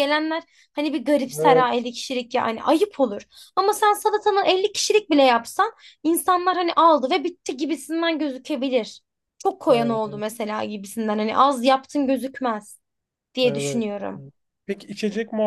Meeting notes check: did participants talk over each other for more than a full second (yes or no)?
no